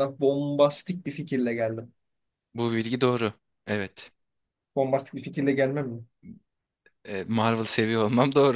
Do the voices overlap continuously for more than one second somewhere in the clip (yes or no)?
no